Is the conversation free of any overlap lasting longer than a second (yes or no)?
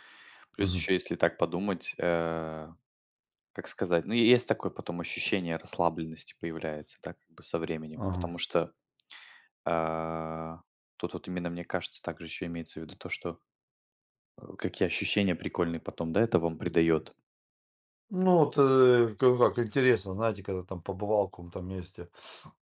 yes